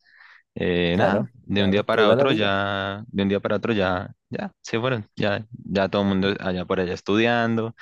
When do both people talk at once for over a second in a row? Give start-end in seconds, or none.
0.9-2.5